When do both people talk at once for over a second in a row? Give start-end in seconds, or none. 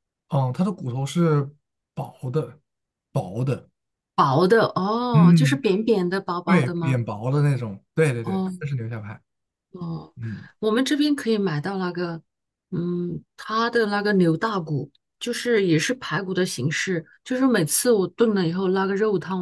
none